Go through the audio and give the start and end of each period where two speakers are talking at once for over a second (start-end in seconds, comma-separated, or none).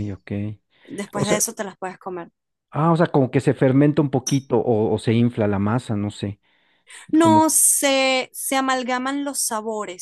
none